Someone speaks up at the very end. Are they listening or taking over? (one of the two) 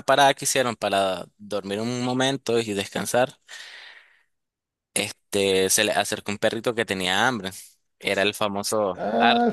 taking over